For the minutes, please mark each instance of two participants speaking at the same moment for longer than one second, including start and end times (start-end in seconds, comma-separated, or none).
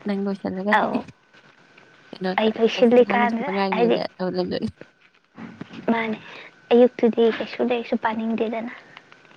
2.4-4.0